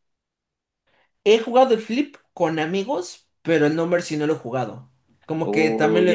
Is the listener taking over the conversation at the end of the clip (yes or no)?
yes